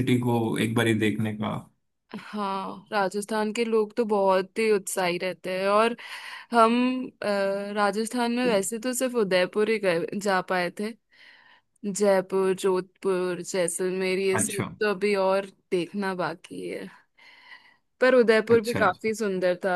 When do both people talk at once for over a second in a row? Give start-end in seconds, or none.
none